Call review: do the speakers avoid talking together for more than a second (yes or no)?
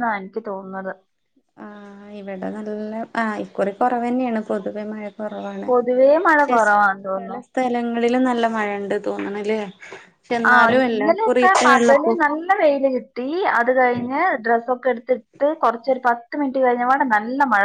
no